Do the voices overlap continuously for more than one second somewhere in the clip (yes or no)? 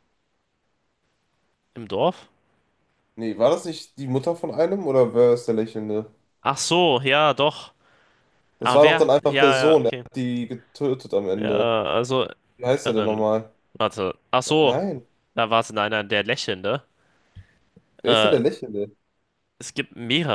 yes